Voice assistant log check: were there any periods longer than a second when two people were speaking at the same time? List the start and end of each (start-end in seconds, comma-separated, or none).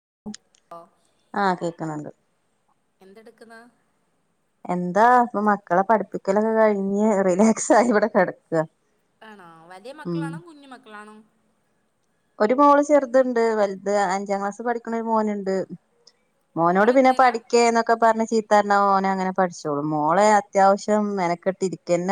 none